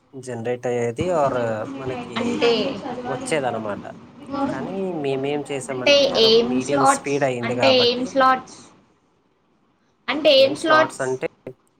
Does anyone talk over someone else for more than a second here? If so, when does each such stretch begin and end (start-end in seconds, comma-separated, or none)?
5.3-8.1